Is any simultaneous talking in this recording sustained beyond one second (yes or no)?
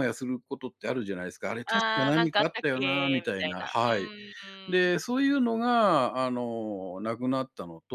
yes